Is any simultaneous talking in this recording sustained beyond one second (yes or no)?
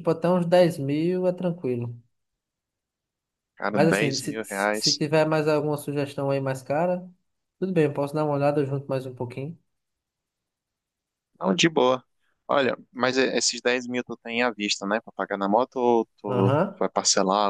yes